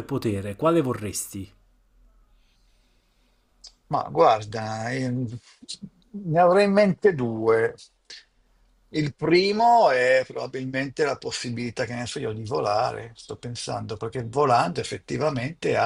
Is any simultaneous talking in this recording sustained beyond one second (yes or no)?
no